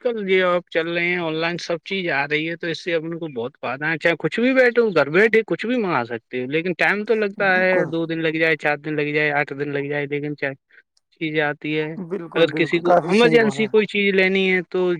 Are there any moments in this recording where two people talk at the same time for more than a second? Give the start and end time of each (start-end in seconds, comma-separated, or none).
12.3-13.7